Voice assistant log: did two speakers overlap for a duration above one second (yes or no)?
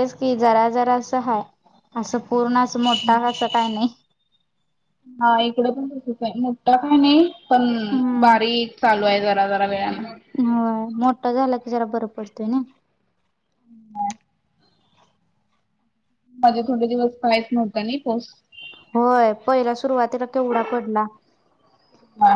no